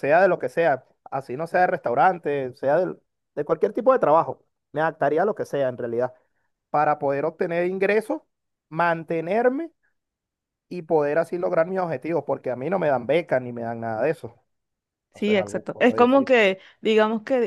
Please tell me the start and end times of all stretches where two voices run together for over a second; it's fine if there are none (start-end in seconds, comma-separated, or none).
15.1-16.4